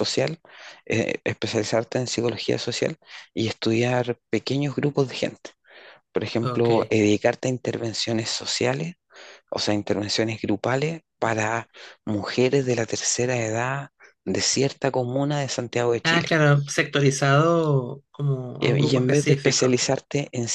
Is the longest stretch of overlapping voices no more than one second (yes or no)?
no